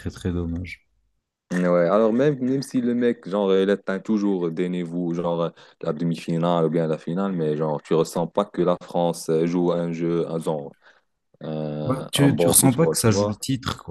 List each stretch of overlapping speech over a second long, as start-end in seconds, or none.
11.8-13.4